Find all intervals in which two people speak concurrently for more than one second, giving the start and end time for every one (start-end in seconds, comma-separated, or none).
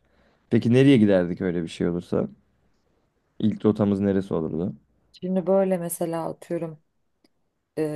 none